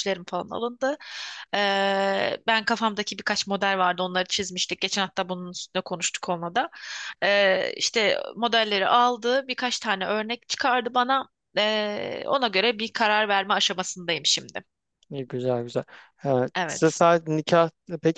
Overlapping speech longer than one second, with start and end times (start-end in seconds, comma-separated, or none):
none